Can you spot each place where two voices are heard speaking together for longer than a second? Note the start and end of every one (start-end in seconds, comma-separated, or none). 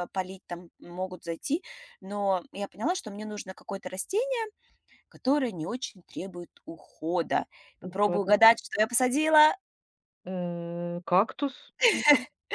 none